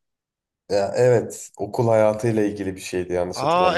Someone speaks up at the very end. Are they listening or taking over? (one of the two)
taking over